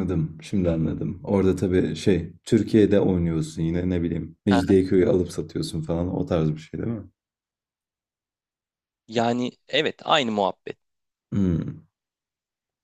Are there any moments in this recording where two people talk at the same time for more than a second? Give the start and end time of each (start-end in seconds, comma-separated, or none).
none